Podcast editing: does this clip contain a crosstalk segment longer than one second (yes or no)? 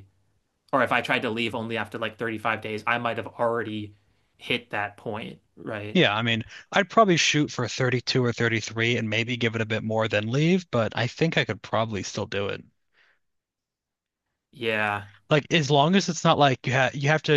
no